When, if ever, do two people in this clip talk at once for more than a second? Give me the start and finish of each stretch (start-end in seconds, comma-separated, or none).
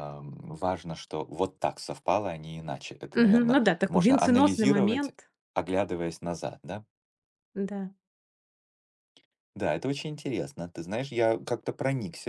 3.2-5.1